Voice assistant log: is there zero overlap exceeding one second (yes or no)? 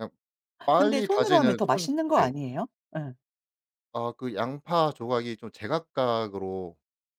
no